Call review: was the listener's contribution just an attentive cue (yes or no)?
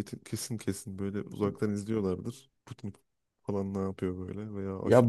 no